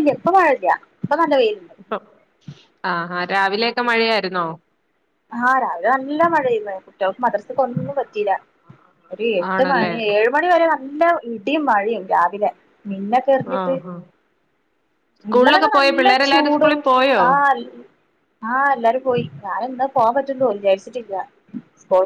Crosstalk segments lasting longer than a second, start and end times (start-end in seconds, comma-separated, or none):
15.3-16.8